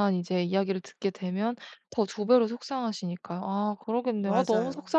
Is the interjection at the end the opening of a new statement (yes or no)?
no